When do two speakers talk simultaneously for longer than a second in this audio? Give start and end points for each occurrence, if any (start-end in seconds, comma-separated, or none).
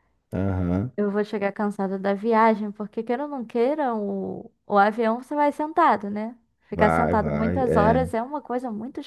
6.7-8.1